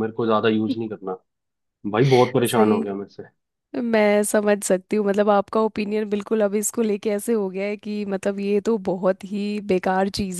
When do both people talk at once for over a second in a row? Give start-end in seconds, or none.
none